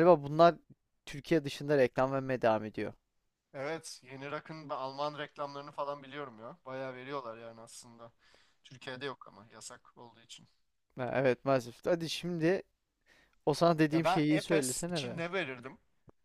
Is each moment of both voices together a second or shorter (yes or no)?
no